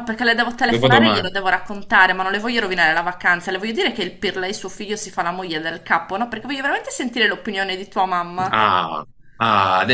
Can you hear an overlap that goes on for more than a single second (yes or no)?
no